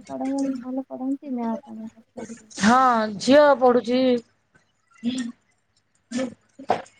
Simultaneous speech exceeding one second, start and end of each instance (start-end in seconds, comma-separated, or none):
none